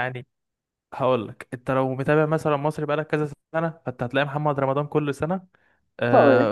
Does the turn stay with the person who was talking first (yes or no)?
yes